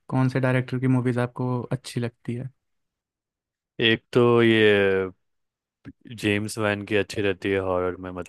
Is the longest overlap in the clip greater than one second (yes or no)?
no